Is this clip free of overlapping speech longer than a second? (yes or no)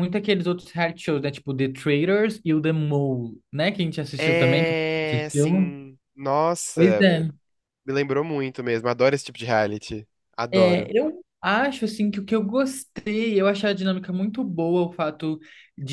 no